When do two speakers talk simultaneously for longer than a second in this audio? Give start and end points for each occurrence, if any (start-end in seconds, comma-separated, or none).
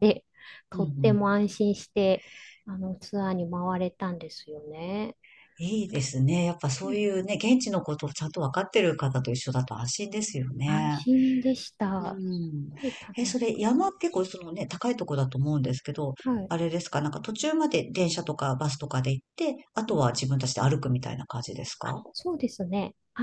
none